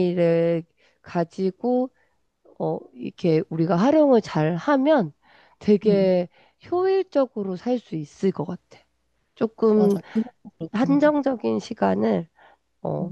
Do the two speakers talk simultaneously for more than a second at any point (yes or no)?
no